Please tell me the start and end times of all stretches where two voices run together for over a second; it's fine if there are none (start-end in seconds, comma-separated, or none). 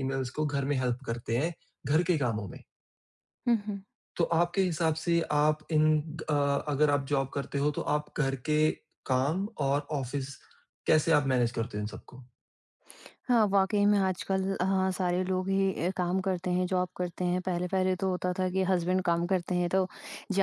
none